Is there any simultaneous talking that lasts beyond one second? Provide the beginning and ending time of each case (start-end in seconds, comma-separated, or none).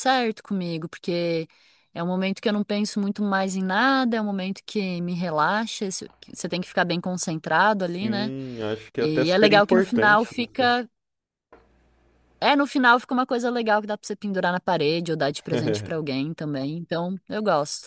8.9-10.3